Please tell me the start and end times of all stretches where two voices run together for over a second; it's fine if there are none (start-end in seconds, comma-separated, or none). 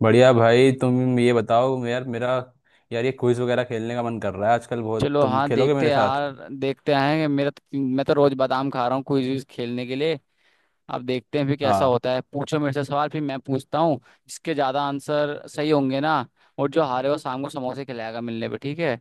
5.0-6.2